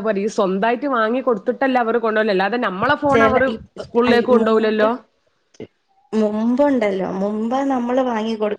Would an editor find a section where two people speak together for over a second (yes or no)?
no